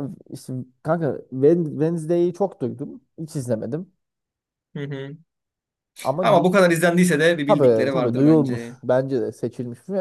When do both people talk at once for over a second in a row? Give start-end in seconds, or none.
7.5-8.8